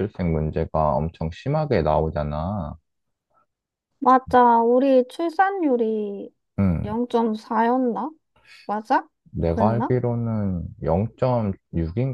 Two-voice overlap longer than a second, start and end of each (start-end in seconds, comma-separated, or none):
none